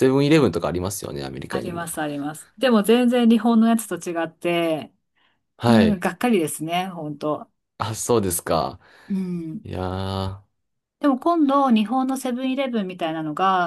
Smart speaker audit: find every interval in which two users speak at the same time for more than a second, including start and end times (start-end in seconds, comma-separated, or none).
none